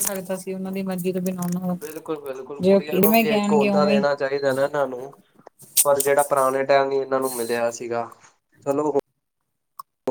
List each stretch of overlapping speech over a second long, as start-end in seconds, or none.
none